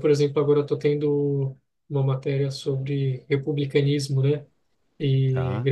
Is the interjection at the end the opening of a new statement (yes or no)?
no